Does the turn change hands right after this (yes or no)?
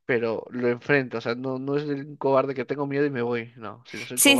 yes